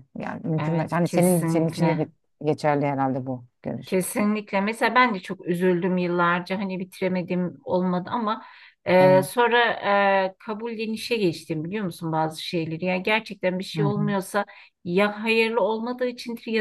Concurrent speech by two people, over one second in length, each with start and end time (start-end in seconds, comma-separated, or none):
0.6-2.1